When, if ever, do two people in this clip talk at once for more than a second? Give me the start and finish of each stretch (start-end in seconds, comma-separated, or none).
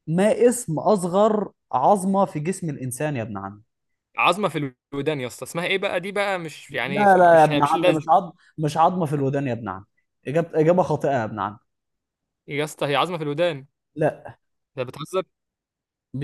6.7-8.1